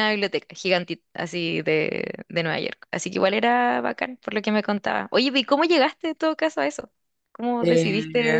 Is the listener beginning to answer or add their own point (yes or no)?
yes